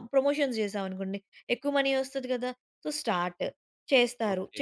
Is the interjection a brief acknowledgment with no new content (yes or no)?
no